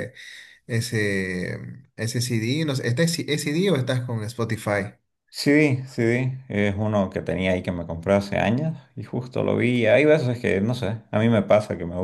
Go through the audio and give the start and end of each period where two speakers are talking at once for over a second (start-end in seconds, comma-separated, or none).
none